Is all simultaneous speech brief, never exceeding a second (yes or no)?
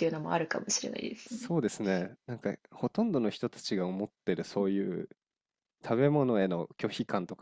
yes